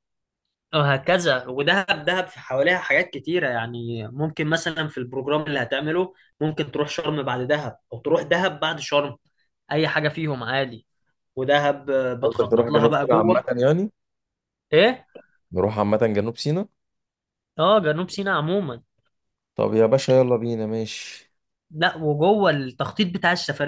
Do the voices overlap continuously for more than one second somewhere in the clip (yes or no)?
yes